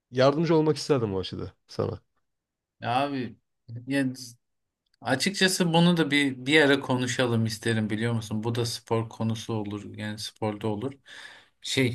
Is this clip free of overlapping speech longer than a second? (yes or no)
yes